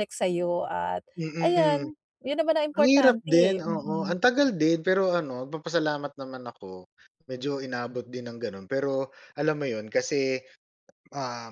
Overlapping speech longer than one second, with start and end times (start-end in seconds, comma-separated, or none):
2.8-4.2